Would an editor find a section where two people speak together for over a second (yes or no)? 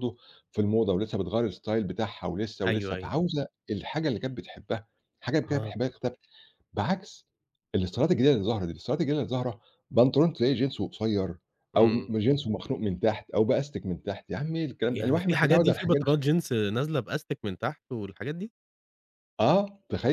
yes